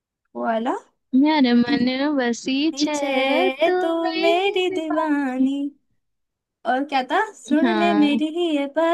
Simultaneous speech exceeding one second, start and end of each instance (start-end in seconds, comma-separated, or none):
3.7-5.5